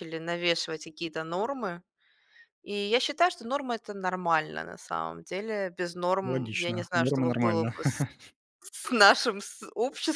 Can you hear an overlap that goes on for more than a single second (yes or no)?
yes